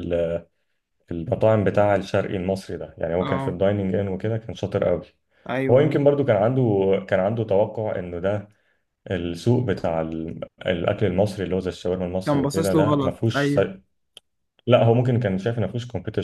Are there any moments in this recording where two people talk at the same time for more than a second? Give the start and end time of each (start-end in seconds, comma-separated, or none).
12.2-13.6